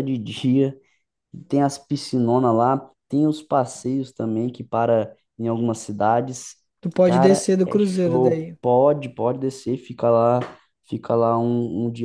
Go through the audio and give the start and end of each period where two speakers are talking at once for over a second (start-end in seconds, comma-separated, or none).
7.0-8.6